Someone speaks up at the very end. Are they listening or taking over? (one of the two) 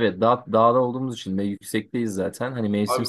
taking over